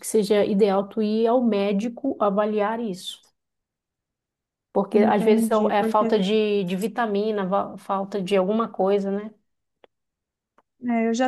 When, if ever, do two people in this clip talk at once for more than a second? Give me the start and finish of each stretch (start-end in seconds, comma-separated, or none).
4.9-6.2